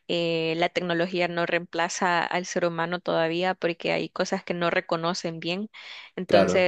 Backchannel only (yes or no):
yes